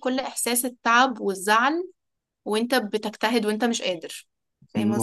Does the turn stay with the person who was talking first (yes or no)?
no